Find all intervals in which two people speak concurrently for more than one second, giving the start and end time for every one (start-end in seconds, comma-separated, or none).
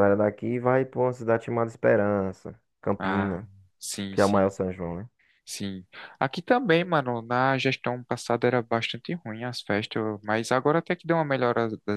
none